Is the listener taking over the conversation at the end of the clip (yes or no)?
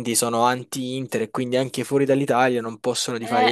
no